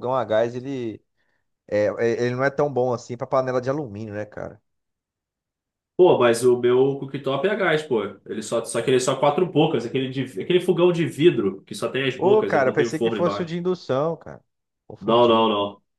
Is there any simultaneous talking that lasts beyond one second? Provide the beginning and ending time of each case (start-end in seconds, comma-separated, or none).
12.2-13.5